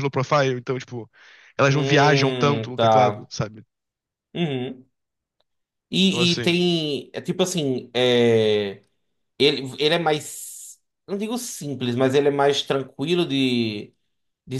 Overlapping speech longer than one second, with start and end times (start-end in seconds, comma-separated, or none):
1.7-3.3